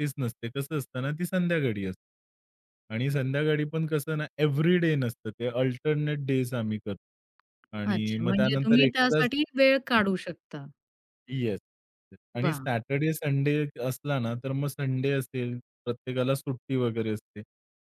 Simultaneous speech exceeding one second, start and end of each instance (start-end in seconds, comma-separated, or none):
7.9-9.3